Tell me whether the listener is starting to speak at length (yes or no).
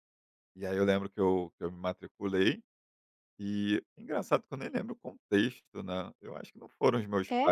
no